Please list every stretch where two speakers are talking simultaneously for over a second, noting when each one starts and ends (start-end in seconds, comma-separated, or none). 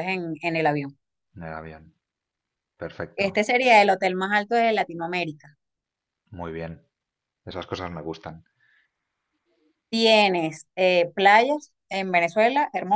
none